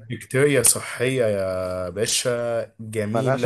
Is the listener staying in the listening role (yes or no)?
yes